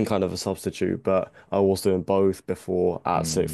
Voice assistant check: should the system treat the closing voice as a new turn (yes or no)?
no